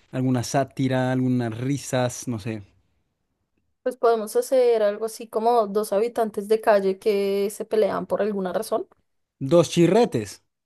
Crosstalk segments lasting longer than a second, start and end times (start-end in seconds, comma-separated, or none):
none